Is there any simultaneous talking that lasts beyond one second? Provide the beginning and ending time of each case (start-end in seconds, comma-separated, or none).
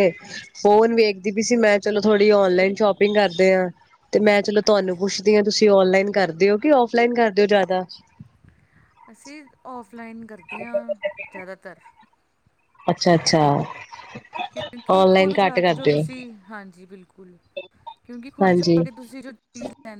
14.9-16.2